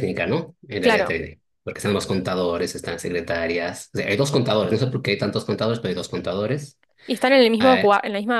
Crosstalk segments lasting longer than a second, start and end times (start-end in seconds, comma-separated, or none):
none